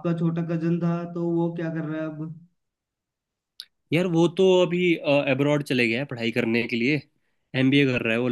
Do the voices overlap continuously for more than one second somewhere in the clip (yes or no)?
no